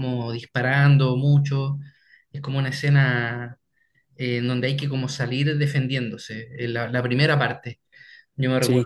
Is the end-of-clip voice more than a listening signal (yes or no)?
yes